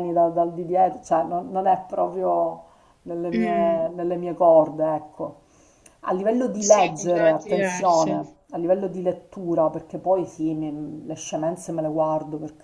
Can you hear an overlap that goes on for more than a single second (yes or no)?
yes